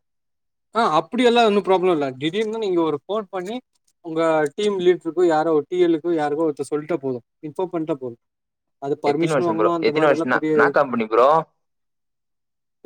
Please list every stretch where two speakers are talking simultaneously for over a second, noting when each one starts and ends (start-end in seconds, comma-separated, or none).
9.1-11.0